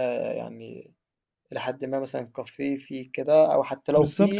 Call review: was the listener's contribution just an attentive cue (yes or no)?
no